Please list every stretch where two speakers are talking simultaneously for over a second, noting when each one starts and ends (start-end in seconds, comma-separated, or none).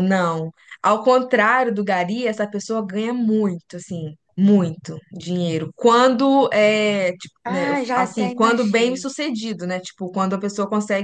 7.4-9.1